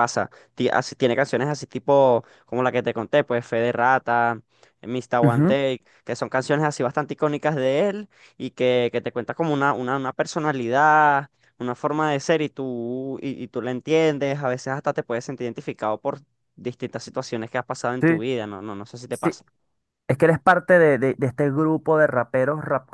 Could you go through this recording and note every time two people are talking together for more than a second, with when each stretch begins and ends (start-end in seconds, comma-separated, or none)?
none